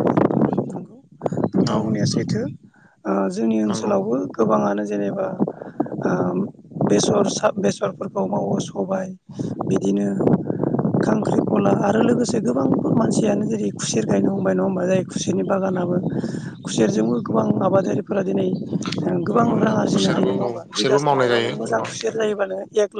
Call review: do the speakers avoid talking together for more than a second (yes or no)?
no